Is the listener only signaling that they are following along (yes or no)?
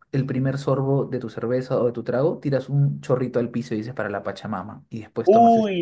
no